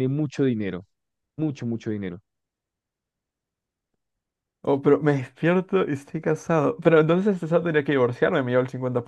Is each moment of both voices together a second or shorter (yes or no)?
yes